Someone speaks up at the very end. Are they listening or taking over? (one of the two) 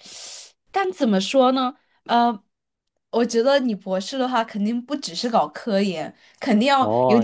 taking over